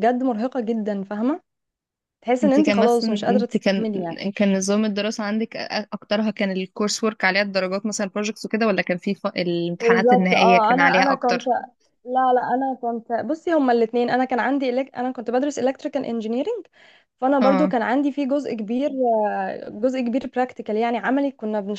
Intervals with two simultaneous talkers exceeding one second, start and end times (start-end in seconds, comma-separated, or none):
2.4-3.9, 9.8-11.4